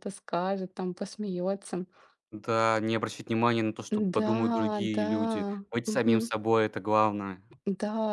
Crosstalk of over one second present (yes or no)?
no